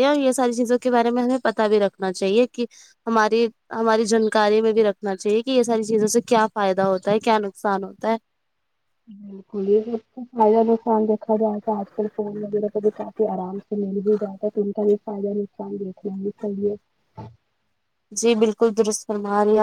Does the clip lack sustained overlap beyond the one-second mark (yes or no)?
yes